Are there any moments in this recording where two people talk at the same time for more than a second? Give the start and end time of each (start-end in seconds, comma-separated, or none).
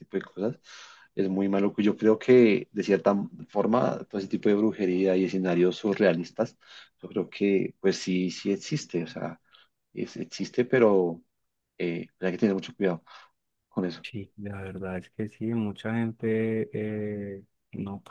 none